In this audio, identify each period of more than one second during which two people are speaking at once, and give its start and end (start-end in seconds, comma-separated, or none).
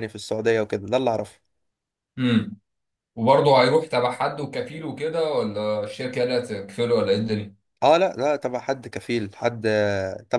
none